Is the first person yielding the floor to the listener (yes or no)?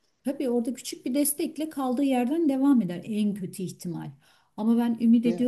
no